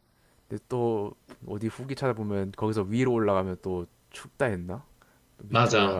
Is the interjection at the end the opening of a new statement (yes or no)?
yes